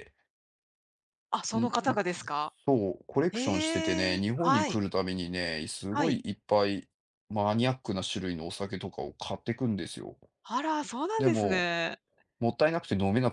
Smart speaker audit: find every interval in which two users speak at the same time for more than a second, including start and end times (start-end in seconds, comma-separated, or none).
3.3-4.8